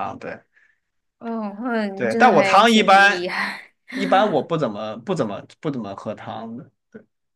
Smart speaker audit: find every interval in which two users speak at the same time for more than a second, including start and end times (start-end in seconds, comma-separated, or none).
1.9-3.3